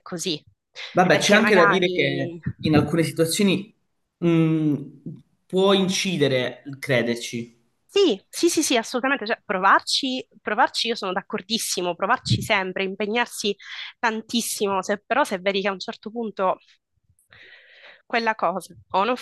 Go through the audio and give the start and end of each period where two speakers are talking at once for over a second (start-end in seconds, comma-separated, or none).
1.1-2.4